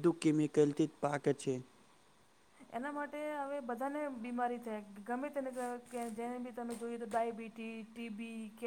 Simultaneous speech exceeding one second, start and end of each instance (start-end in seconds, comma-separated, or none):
none